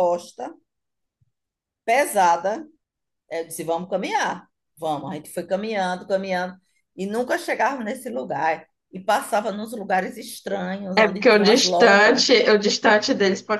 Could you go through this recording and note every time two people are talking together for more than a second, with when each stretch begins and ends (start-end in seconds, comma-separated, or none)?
11.0-12.2